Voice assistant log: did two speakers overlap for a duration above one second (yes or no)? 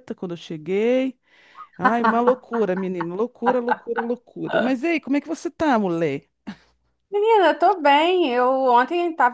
no